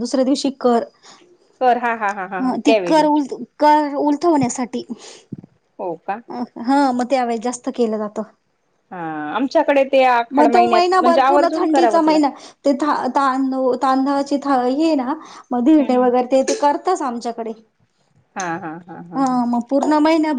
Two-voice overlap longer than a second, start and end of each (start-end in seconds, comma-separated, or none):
10.3-12.3